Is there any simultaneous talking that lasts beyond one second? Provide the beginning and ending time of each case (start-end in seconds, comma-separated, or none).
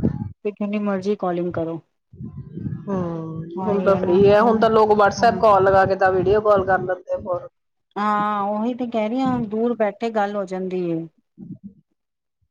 none